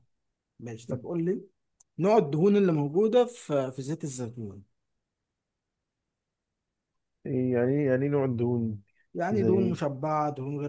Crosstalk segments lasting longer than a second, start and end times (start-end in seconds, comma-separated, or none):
none